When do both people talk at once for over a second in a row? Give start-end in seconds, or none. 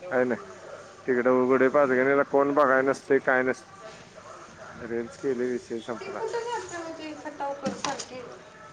none